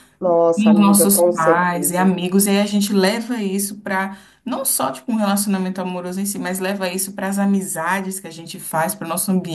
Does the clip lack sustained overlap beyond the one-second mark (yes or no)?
no